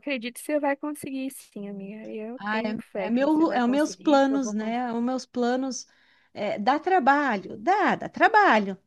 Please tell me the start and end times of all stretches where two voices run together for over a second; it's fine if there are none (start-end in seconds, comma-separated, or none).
2.4-4.9